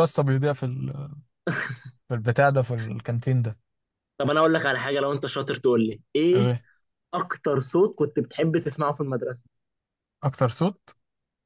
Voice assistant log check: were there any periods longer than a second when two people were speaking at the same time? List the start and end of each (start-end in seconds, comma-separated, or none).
none